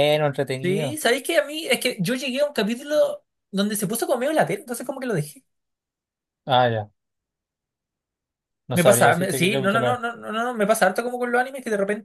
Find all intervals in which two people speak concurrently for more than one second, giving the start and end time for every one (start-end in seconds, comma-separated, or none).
8.7-10.0